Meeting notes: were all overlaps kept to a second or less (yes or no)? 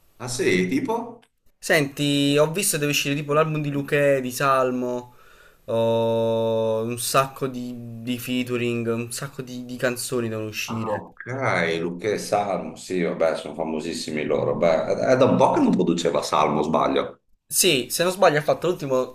yes